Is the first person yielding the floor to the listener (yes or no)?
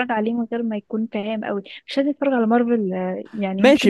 yes